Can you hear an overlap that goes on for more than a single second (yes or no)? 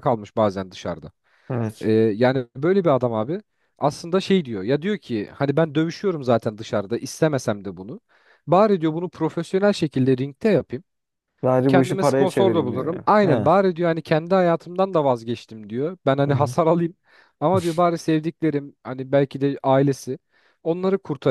yes